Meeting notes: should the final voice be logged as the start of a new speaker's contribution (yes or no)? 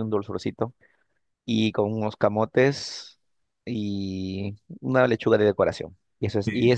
no